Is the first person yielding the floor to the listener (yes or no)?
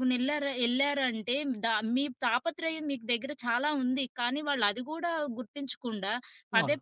no